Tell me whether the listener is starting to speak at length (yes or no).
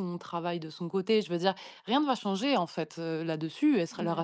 no